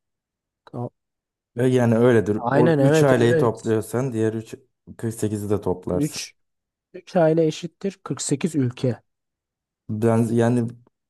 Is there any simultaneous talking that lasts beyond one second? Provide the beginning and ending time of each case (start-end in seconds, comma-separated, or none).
2.4-3.8